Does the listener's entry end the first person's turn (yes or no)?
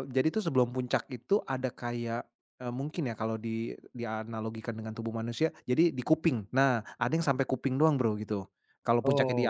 no